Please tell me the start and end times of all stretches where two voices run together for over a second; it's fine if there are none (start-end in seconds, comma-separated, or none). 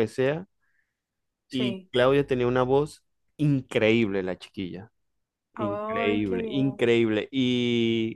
5.6-6.8